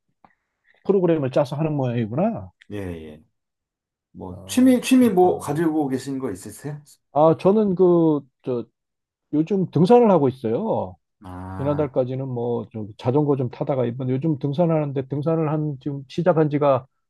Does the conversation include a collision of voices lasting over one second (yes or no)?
yes